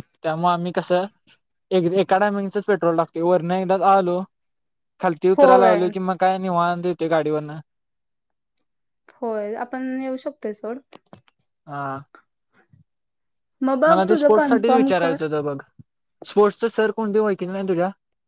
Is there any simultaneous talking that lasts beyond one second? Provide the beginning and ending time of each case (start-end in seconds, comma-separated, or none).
13.9-15.2